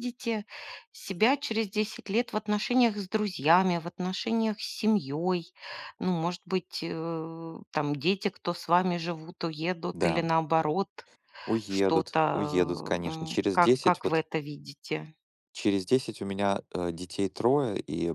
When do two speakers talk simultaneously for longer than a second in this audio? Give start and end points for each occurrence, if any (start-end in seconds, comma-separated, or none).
11.7-14.2